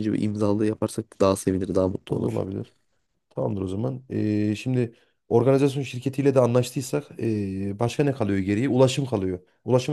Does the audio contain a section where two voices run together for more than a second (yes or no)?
no